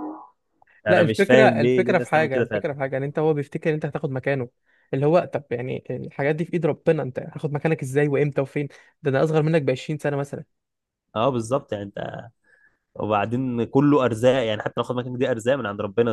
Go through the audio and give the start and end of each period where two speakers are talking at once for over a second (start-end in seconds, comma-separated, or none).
0.9-2.6